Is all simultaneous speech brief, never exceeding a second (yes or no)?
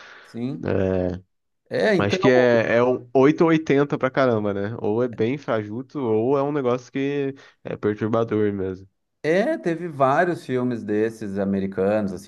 yes